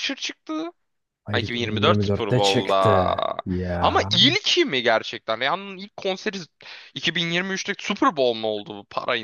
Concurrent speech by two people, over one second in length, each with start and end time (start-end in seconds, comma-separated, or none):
1.3-3.1